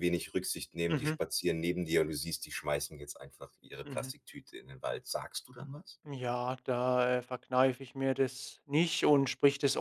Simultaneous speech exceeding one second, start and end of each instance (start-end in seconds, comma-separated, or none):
none